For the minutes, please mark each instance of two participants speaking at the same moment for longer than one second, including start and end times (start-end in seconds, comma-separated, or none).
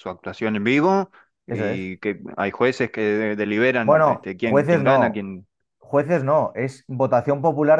3.8-5.2